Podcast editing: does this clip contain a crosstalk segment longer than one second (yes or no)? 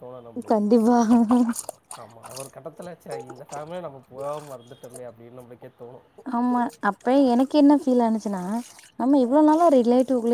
no